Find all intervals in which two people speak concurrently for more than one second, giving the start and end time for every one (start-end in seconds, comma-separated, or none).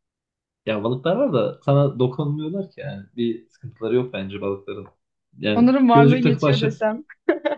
5.5-6.8